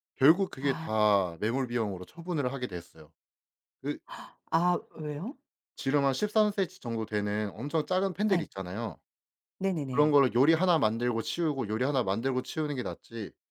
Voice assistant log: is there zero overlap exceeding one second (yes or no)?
yes